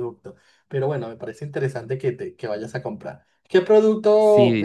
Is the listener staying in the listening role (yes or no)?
no